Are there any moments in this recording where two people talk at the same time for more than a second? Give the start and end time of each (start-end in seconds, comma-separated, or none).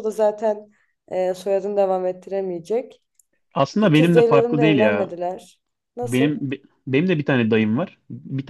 3.8-5.1